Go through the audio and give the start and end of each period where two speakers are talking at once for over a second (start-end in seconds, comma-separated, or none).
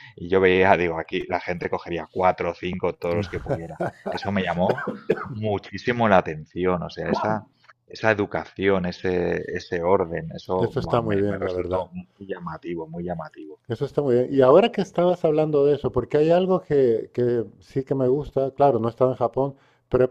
10.6-11.9